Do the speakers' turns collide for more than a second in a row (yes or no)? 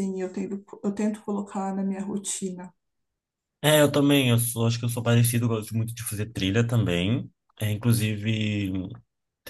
no